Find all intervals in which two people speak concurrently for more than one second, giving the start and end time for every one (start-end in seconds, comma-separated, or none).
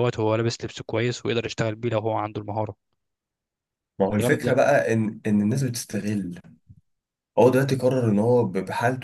none